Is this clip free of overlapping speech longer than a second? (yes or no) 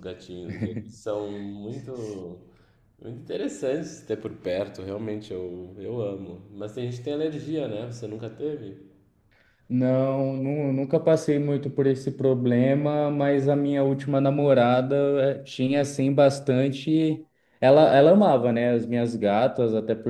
yes